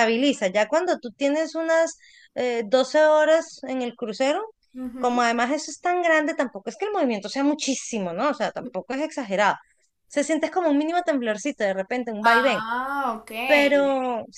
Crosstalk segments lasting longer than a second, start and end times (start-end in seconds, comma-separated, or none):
none